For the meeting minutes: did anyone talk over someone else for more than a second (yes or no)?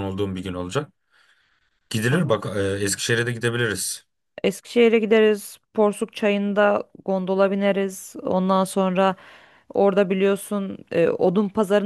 no